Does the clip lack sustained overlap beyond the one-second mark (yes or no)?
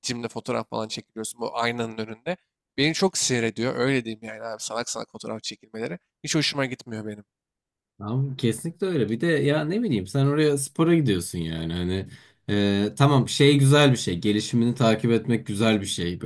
yes